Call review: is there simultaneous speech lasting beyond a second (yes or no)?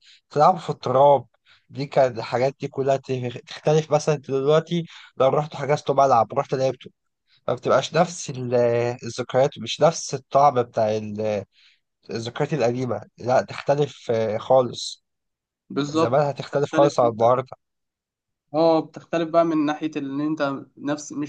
yes